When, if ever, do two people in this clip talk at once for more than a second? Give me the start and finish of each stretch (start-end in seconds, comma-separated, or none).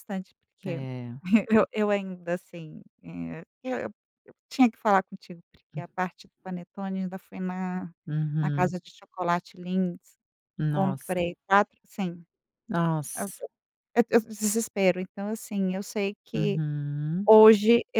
none